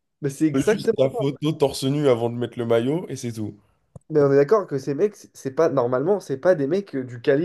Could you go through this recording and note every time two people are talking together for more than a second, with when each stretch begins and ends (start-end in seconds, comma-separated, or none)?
none